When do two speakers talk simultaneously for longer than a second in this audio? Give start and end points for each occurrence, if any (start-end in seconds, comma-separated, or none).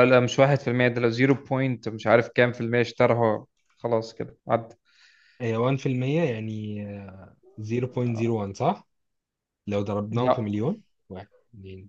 none